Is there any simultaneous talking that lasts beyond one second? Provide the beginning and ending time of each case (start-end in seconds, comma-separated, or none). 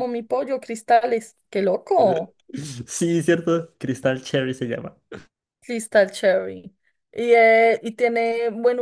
none